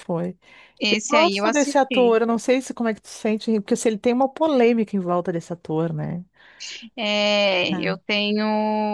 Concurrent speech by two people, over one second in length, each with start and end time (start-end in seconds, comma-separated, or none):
0.9-2.2